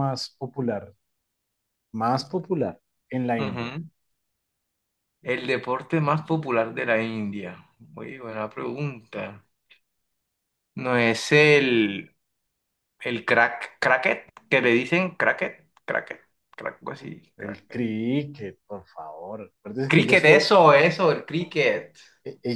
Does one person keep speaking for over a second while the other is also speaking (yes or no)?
no